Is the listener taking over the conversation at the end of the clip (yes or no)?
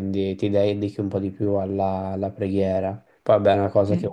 no